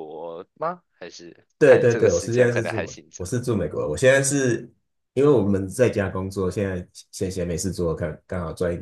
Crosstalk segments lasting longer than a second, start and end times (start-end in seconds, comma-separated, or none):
1.6-3.4